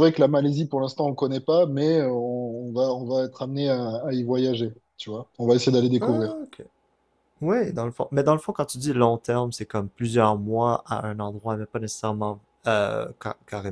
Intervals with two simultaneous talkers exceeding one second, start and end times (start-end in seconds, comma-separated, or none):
none